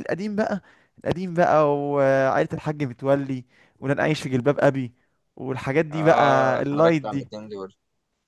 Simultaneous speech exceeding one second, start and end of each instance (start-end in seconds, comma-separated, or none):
5.9-7.3